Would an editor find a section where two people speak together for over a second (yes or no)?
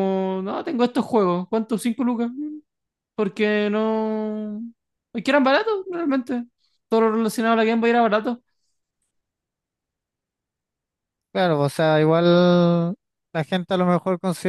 no